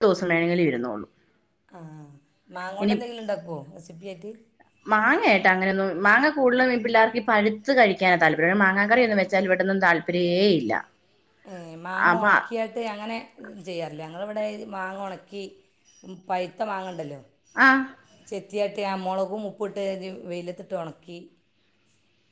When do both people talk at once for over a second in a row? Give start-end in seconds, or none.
none